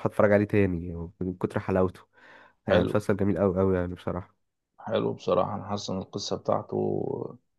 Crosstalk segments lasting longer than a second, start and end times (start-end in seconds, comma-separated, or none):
none